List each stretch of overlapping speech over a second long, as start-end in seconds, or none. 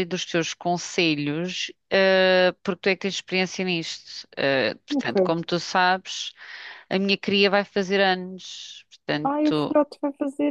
none